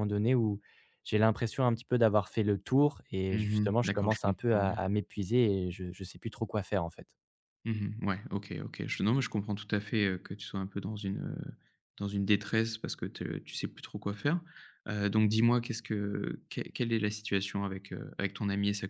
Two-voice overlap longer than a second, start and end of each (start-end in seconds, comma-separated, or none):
3.3-4.8